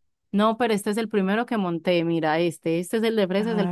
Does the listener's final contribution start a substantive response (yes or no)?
yes